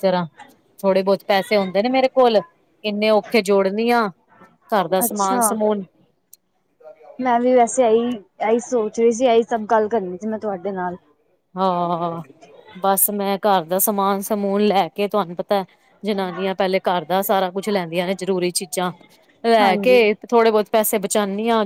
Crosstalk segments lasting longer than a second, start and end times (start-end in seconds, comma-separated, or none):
none